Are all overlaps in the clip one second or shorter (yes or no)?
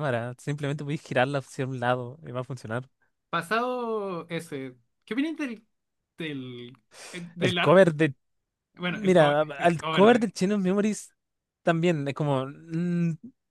no